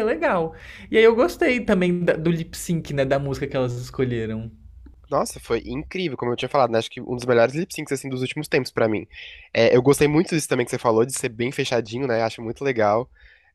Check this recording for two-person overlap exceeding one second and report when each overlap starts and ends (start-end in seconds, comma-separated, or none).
none